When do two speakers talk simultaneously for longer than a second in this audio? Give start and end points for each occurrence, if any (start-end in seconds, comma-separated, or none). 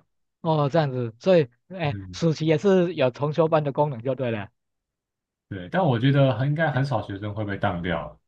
none